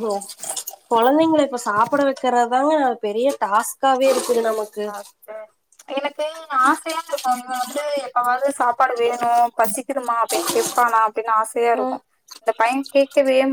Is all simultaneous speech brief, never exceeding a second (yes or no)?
yes